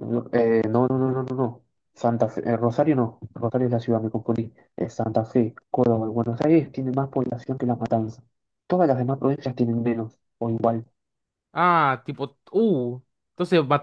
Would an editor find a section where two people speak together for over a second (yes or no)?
no